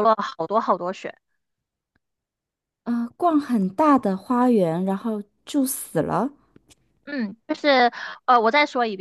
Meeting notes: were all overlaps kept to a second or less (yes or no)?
yes